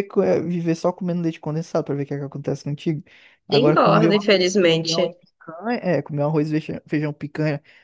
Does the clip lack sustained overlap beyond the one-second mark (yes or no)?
no